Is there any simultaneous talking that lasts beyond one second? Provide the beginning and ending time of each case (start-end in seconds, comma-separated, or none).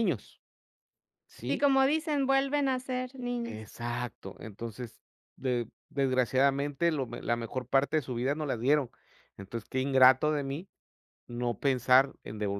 none